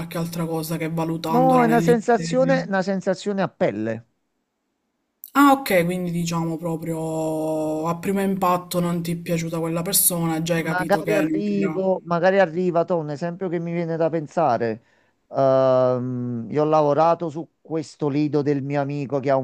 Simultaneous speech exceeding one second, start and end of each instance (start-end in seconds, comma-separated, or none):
1.3-2.7, 10.6-11.8